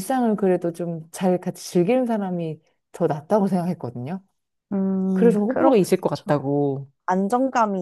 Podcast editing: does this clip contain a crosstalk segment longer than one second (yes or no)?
yes